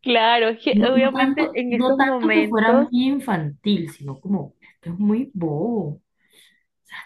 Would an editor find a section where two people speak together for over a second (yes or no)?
yes